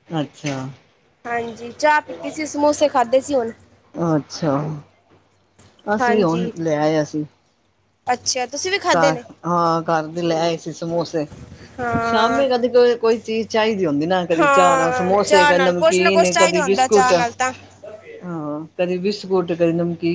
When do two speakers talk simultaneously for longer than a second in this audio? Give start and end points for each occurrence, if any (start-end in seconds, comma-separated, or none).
14.4-17.1